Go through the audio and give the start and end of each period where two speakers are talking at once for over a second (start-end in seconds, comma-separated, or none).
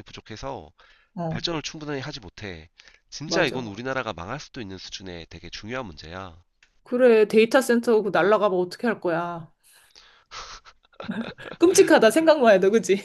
none